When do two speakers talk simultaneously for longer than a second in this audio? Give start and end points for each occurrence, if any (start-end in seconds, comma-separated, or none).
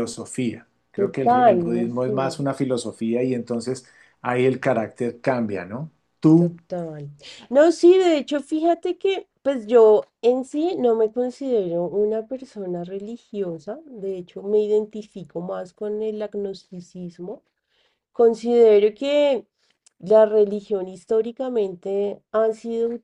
0.9-2.2